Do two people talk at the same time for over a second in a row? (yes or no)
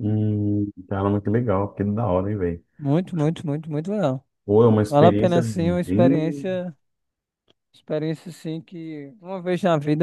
yes